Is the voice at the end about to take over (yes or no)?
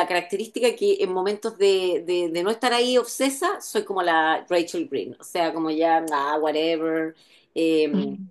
no